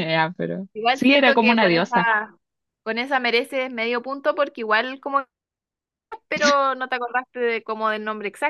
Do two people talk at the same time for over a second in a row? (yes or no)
yes